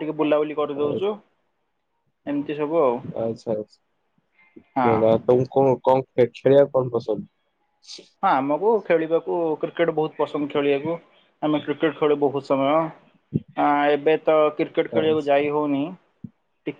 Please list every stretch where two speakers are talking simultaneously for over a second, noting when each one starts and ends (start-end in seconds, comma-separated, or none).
none